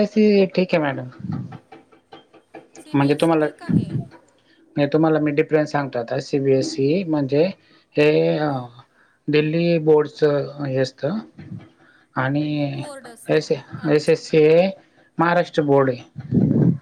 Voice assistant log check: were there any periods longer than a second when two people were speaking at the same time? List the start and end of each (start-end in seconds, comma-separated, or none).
12.7-14.2